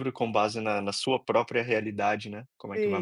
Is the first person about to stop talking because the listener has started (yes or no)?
yes